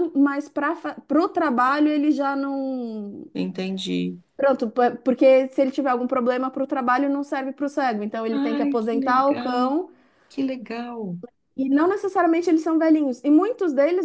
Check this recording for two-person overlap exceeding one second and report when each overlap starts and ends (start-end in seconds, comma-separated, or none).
8.3-9.7